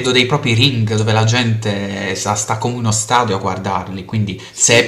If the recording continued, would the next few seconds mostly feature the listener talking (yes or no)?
no